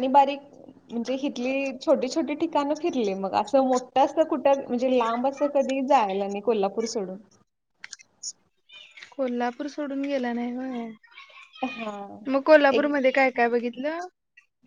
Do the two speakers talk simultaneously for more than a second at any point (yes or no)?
no